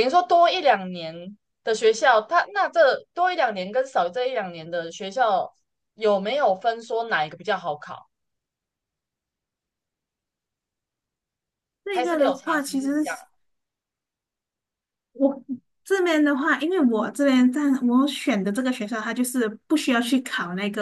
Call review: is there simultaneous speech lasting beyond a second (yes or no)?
yes